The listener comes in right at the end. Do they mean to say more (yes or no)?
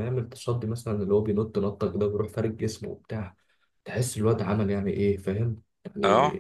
no